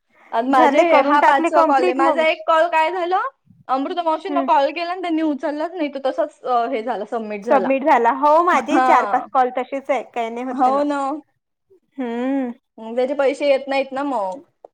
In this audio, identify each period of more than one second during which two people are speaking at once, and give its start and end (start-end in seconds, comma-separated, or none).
0.6-2.2